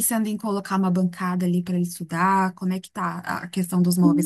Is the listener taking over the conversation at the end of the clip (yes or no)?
yes